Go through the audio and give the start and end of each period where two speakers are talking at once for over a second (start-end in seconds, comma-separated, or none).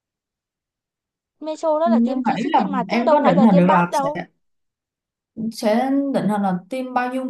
1.8-4.1